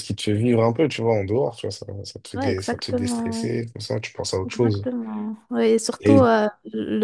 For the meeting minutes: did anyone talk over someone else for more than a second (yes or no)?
yes